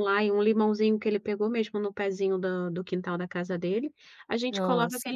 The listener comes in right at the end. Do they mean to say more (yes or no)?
no